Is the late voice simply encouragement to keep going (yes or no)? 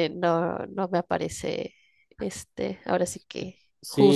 no